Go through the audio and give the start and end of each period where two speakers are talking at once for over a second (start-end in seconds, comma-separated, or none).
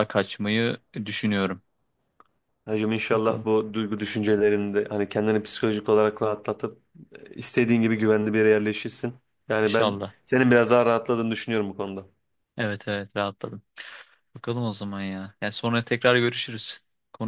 none